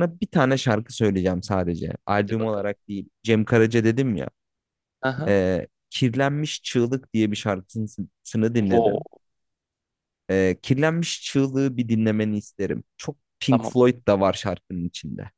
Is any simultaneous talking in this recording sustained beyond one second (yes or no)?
no